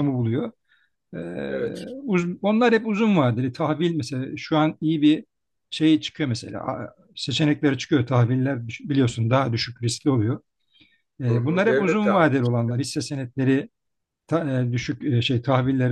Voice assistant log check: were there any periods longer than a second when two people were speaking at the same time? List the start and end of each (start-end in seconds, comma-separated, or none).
11.3-12.8